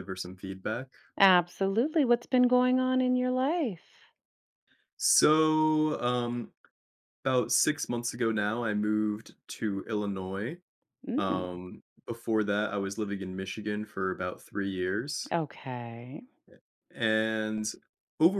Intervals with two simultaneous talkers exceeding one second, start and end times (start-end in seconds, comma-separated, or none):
none